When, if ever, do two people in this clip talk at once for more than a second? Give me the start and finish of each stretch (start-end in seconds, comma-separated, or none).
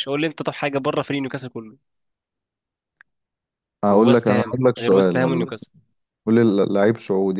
3.9-5.5